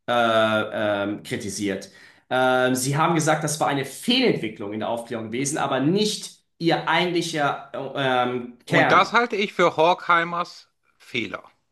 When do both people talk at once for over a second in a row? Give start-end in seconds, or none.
none